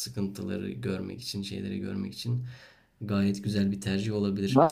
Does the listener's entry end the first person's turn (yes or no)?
yes